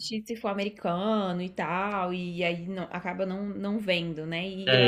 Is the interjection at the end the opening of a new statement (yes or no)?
yes